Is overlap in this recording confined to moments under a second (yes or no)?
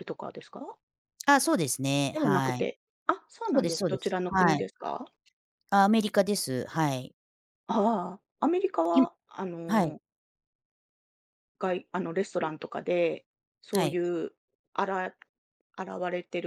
no